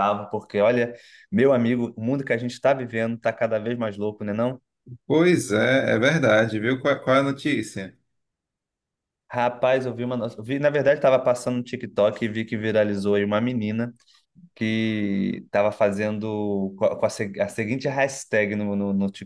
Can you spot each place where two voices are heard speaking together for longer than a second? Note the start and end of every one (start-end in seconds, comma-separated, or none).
none